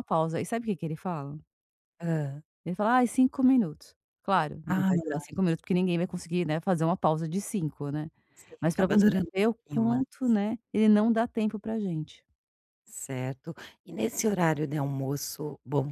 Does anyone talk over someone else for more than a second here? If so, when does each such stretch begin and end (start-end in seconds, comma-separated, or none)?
8.6-10.0